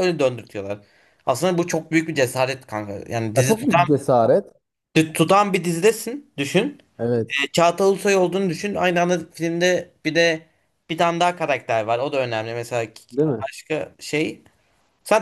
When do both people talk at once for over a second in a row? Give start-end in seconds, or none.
none